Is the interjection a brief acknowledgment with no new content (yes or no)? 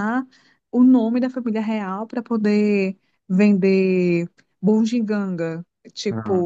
yes